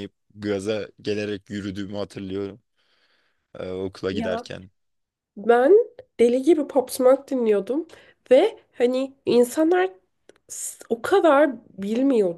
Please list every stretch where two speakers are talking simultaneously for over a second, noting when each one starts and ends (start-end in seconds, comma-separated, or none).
none